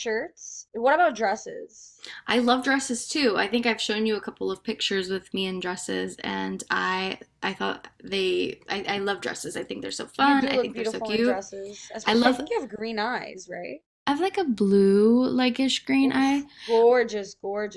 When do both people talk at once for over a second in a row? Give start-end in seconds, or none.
10.2-11.4